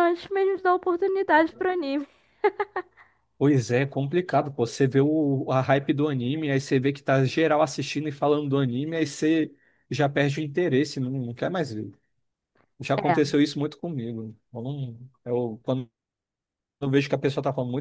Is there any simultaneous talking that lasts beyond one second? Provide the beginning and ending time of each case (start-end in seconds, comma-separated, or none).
none